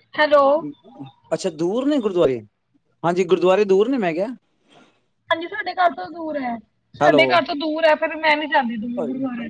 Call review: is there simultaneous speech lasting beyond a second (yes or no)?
no